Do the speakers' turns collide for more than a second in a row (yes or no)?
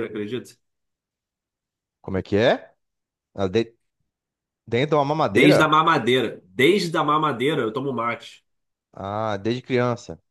no